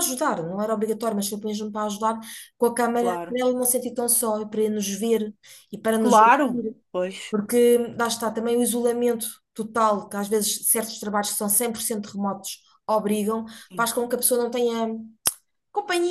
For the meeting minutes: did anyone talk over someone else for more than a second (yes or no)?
no